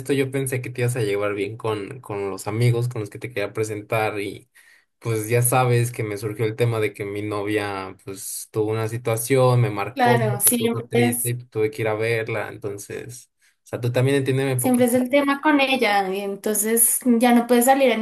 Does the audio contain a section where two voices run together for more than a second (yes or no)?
yes